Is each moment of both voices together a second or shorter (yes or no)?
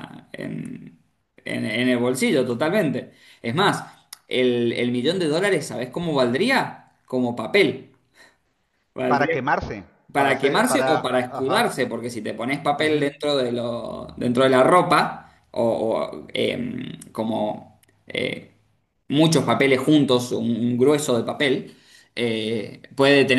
no